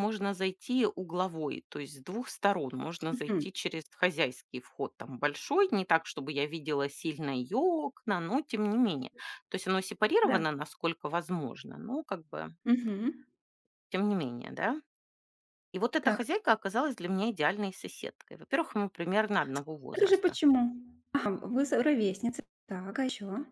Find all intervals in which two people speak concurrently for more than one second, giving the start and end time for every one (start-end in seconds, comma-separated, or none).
none